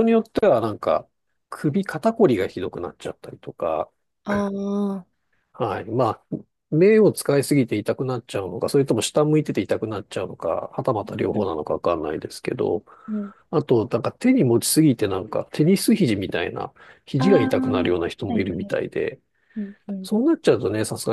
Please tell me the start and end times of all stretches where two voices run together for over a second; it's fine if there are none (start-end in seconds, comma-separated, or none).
17.2-18.8